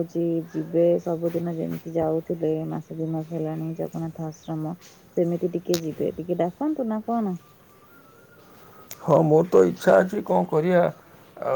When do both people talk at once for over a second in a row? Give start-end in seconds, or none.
none